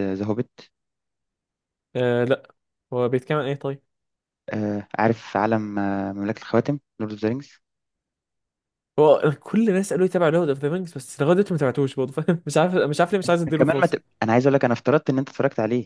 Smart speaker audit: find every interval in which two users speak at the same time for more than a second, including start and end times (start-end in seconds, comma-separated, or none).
none